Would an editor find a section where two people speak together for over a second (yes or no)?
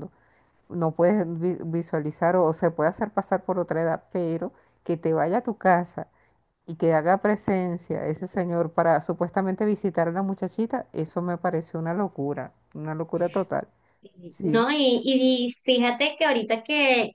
no